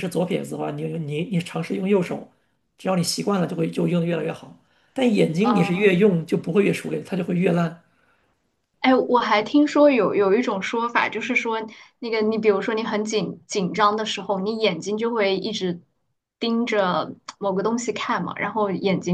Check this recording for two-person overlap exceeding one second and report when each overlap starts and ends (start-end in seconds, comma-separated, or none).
none